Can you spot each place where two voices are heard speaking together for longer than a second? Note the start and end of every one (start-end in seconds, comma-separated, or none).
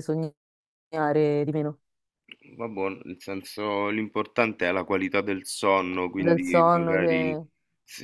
6.1-7.3